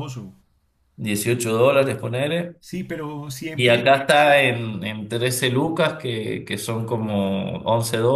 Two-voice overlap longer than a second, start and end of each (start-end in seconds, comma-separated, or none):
none